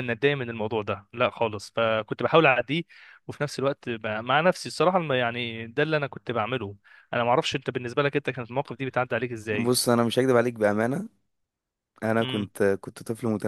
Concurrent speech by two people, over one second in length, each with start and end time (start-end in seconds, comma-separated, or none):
none